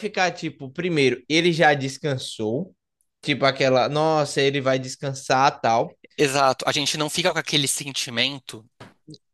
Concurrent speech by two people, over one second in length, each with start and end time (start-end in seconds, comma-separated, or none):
none